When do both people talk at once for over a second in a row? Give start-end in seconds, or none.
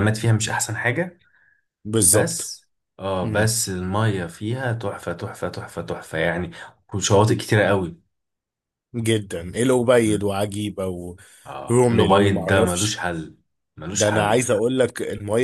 11.7-13.0